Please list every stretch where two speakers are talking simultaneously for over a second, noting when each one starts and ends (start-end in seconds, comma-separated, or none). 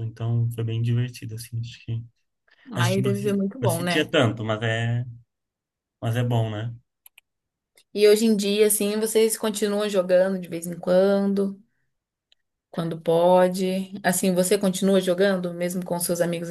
2.7-4.1